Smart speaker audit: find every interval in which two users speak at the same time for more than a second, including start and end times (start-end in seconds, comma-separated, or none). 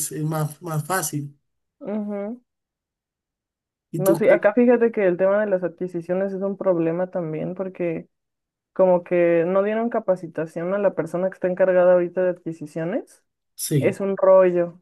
none